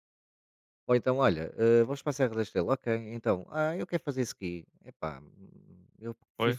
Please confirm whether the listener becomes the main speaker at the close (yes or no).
no